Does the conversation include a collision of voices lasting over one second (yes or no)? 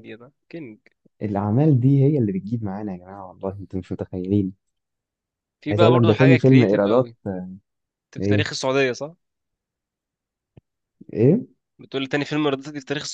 yes